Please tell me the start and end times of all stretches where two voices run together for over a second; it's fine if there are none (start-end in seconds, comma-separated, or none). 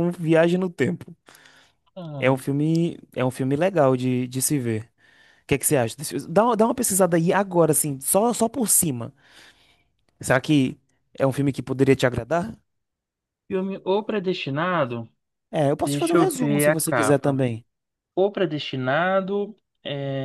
15.8-17.4